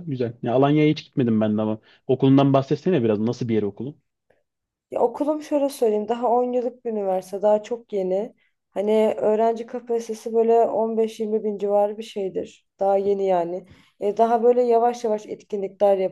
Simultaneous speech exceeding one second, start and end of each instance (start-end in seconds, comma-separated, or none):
none